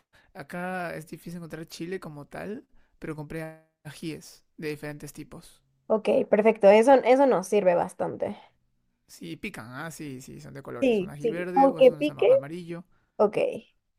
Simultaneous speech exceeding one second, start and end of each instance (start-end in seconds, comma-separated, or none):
10.8-12.3